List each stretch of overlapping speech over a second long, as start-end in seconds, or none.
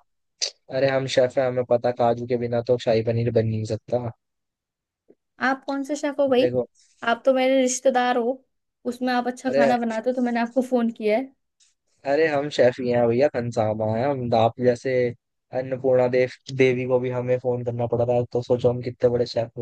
none